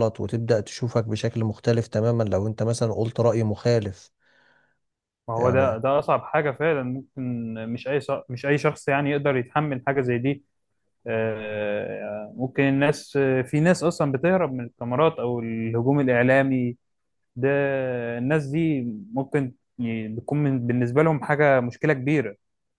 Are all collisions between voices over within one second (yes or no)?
yes